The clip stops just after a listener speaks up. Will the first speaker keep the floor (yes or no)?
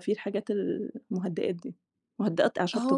no